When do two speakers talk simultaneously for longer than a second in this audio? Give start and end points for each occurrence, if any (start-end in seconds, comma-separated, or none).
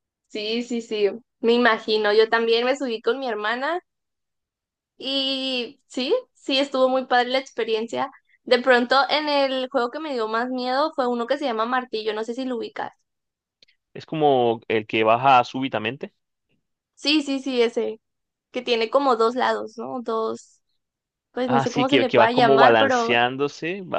21.4-23.1